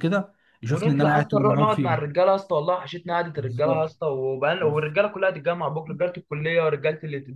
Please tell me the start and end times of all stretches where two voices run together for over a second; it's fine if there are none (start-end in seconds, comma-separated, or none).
0.7-2.1